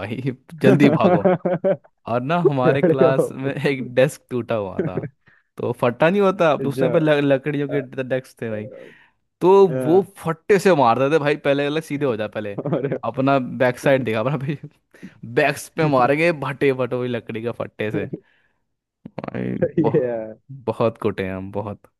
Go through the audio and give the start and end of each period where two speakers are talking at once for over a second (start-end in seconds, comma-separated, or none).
none